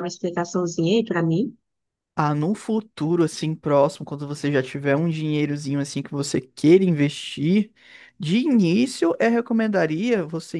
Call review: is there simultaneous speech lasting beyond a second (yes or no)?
no